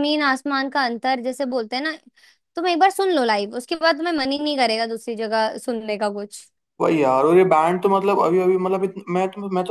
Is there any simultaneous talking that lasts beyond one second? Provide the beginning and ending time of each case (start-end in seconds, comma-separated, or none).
none